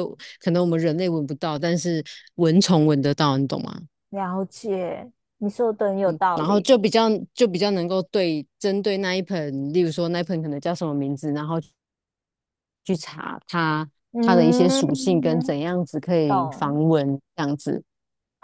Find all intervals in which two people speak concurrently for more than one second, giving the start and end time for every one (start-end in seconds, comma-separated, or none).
14.1-15.5